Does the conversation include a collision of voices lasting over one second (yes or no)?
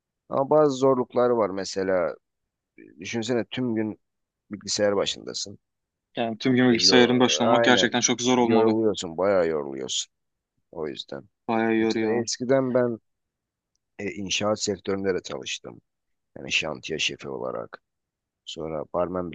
yes